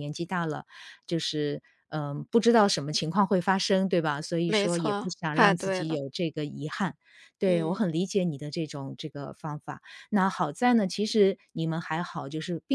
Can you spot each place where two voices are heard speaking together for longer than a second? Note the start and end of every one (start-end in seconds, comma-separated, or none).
4.5-6.0